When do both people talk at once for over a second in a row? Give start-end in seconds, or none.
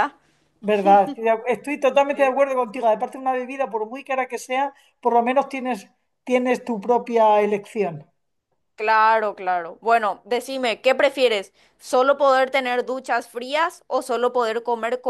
none